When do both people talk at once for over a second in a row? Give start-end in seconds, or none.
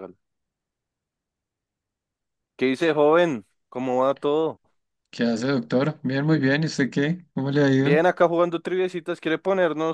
none